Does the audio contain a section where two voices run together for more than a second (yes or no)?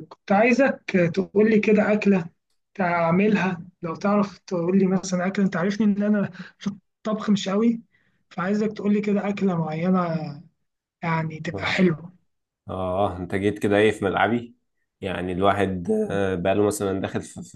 no